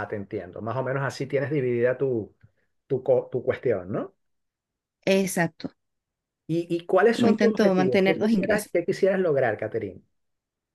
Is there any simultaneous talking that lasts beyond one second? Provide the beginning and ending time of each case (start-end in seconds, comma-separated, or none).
7.1-8.7